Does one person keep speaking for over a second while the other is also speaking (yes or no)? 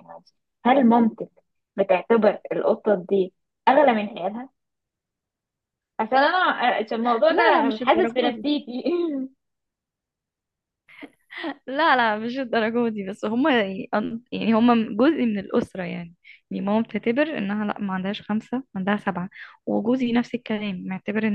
yes